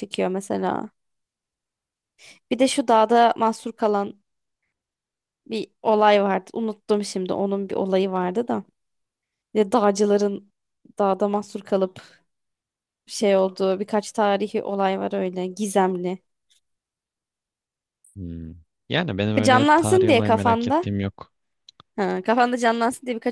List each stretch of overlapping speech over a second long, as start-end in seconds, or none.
19.4-20.9